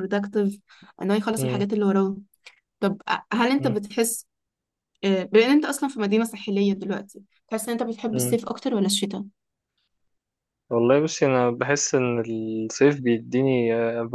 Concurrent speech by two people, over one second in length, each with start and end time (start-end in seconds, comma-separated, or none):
none